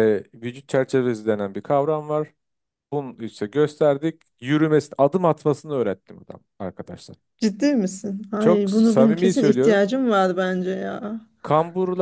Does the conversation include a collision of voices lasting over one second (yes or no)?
yes